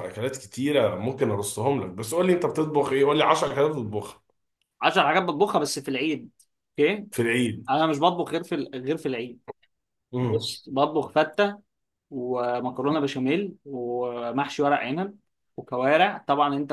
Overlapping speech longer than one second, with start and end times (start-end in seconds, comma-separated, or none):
none